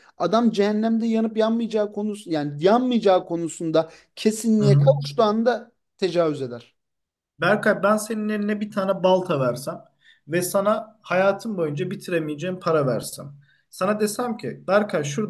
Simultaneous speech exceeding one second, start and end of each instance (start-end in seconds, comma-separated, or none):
none